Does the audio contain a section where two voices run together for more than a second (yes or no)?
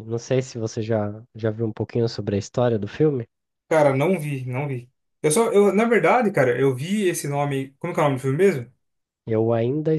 no